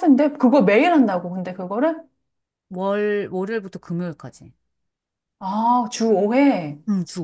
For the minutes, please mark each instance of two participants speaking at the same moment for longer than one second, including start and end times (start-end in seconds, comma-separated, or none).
none